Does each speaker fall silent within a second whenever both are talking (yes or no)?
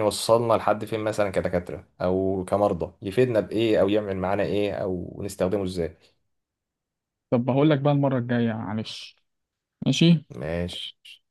yes